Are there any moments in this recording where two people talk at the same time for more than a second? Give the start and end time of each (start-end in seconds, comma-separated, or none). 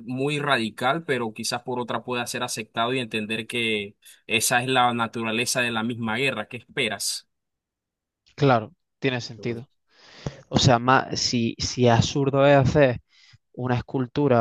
none